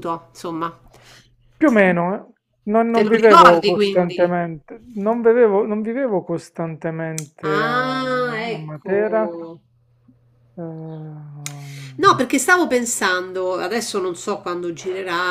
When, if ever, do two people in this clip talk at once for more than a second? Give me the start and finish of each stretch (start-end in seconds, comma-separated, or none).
2.9-4.3, 7.4-9.3